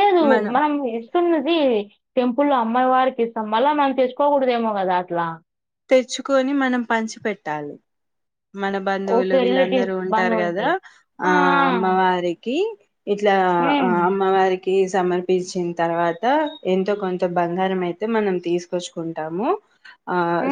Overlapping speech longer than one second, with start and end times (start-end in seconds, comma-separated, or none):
9.2-10.7